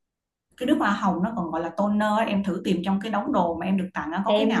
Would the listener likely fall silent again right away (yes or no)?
no